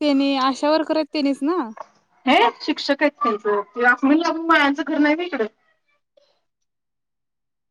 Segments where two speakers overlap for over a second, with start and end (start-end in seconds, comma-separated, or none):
none